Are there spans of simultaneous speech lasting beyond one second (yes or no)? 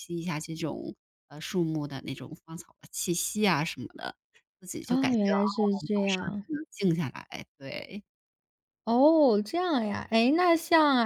yes